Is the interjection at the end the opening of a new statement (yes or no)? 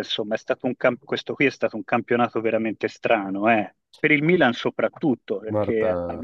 no